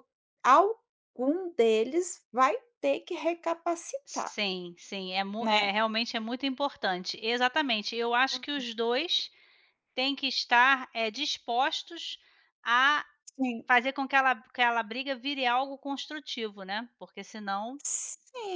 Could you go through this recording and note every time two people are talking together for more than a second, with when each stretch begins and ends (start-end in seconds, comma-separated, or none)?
none